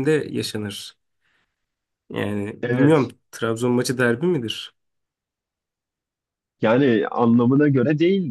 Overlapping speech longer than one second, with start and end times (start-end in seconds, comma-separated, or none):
none